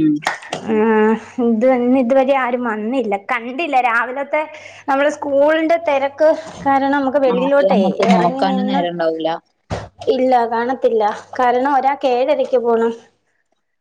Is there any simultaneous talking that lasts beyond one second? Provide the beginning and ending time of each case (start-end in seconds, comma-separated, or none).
7.3-8.8